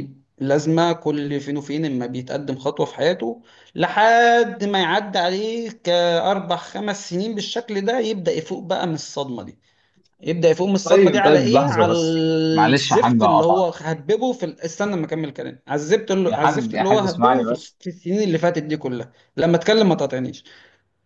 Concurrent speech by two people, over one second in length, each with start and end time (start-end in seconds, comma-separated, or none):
10.8-13.7, 16.3-17.8